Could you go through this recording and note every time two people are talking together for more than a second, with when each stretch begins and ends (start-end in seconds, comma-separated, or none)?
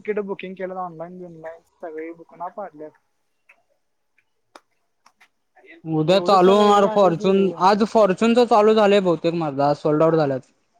6.1-7.4